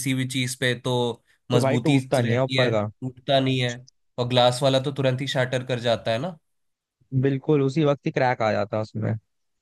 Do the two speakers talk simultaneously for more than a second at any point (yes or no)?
yes